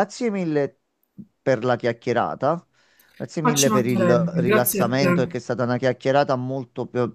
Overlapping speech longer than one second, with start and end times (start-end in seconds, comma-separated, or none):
3.4-5.3